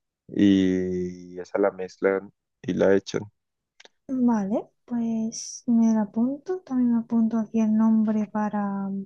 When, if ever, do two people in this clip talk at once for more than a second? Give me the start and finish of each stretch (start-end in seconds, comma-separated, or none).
none